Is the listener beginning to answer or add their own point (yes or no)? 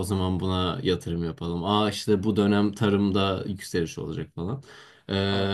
no